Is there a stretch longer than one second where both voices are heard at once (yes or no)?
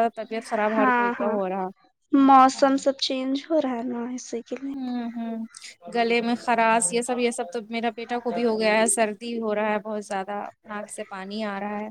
no